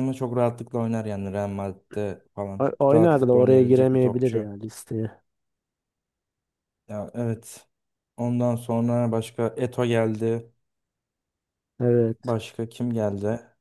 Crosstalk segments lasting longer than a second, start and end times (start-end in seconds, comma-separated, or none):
2.6-4.5